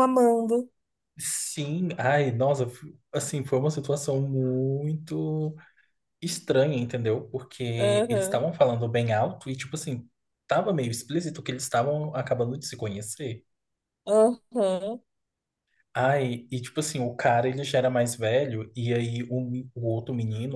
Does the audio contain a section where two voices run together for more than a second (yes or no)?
no